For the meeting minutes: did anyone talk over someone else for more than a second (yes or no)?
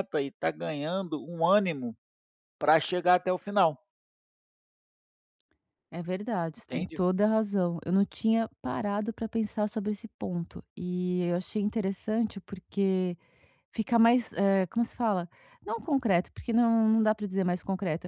no